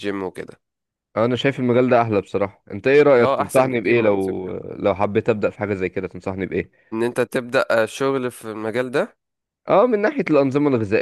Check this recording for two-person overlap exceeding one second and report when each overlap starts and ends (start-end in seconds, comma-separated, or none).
3.2-4.5